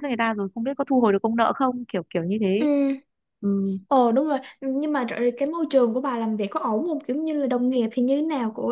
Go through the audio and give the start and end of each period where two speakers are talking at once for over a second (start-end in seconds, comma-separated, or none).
none